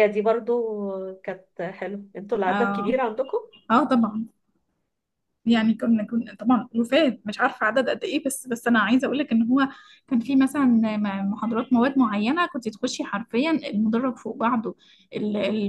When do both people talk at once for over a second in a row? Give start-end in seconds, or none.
none